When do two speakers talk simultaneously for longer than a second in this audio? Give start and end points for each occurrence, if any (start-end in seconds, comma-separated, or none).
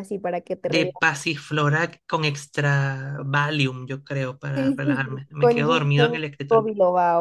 4.5-6.7